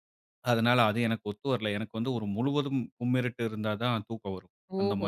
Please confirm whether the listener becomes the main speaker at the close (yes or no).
yes